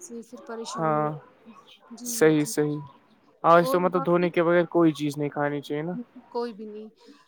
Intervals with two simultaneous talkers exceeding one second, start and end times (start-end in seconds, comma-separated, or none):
none